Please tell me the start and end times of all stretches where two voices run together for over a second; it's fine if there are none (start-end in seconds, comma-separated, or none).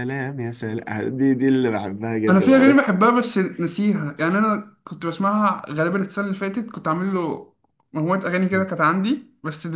none